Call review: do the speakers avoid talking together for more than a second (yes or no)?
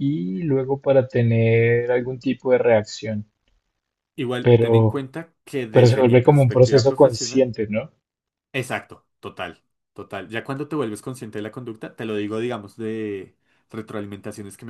no